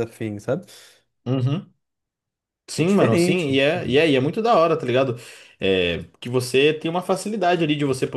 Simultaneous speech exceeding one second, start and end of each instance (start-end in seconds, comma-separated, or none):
2.7-4.0